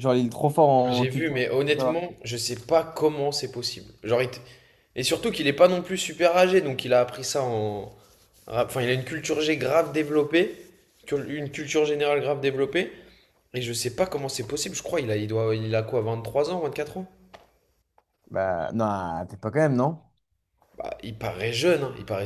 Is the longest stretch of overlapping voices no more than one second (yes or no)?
no